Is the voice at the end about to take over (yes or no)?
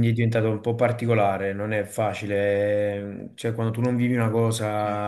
no